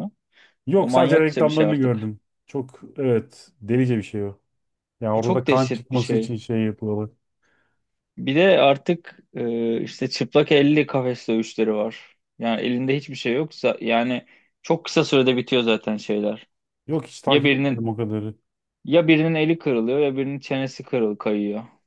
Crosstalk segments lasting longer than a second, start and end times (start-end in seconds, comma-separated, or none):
0.8-2.1, 5.1-6.3